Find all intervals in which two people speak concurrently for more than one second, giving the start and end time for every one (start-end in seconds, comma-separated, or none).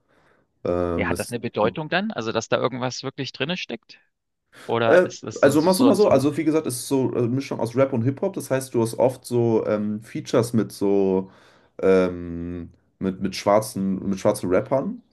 4.9-6.3